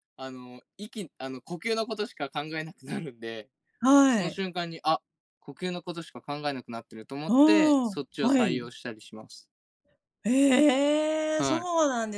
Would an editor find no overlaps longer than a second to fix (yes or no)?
no